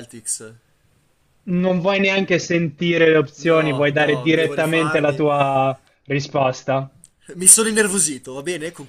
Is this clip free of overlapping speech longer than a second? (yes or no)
no